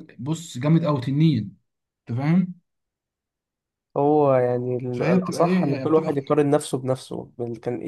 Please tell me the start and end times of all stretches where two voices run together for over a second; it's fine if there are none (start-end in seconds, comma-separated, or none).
4.9-6.2